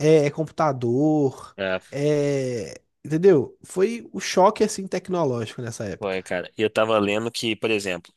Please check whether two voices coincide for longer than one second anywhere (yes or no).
no